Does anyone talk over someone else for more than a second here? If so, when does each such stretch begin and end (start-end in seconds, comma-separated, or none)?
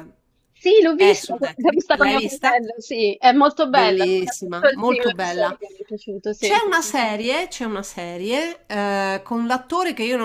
1.0-2.6, 3.7-5.6